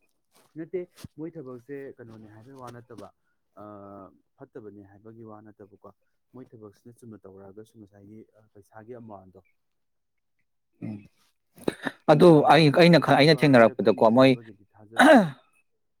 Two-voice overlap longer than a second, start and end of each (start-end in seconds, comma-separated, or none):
12.3-14.3